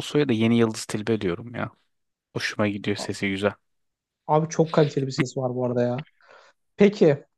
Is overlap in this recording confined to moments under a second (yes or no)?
yes